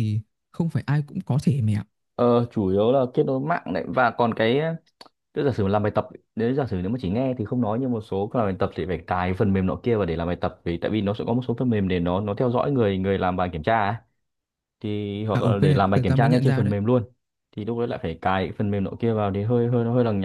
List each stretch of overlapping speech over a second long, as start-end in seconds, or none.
15.3-16.7